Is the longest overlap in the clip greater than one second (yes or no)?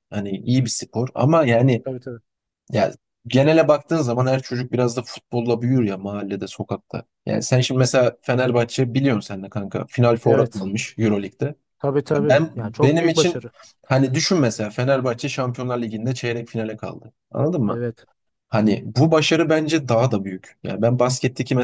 yes